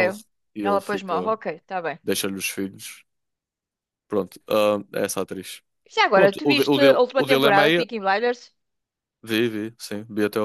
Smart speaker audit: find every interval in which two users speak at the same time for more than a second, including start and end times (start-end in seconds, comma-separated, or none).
6.1-7.8